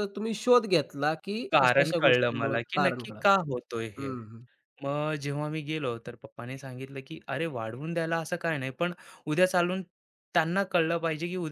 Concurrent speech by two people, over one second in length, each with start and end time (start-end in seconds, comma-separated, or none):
1.5-3.2